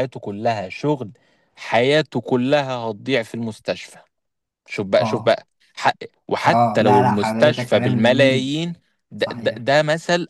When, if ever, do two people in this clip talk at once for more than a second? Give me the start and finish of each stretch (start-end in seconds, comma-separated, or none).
6.4-8.5